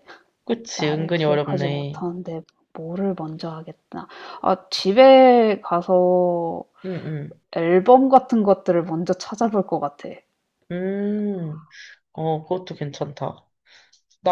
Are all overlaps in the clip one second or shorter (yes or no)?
no